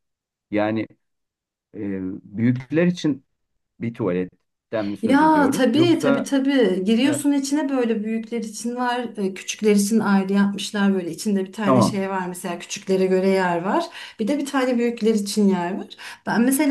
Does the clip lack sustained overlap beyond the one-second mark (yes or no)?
no